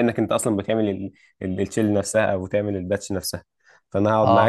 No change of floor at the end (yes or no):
no